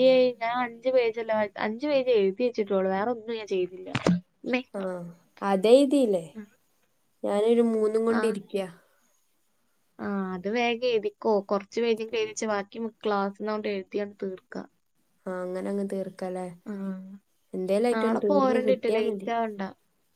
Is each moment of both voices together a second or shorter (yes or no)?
no